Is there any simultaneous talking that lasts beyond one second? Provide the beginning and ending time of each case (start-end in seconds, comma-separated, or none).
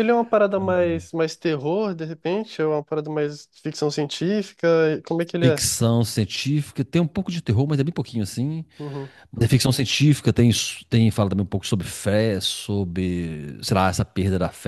none